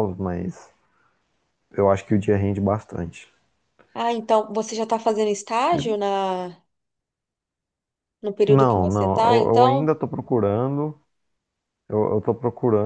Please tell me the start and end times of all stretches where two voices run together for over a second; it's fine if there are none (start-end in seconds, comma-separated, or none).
8.5-10.0